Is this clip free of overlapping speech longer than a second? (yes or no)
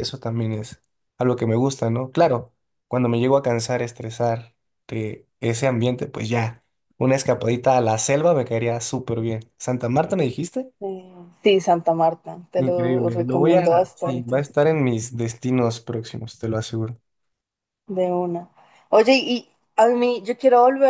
no